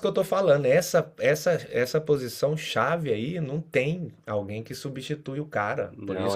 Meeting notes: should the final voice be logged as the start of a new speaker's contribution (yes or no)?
no